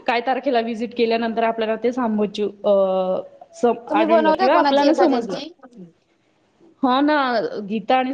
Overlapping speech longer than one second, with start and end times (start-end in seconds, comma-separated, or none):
3.9-5.4